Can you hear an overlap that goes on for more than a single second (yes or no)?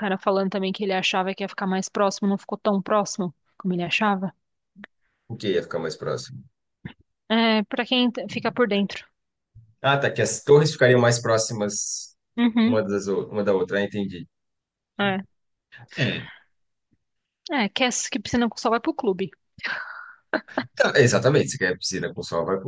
no